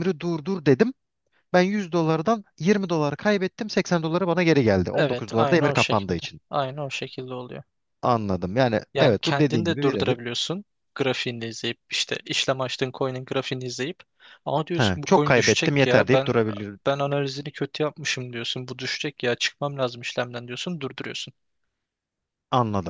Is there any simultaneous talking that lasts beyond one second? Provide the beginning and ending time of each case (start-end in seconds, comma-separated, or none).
4.9-6.4, 8.9-10.2, 14.8-16.4